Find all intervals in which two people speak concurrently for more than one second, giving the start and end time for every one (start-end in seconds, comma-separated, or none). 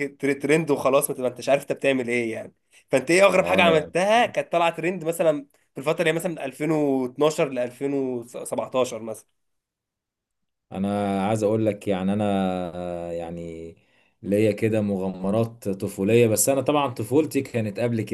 none